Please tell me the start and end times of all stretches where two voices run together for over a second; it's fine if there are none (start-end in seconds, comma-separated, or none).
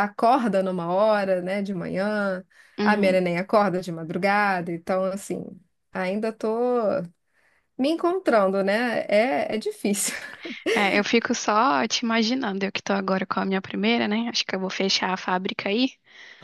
none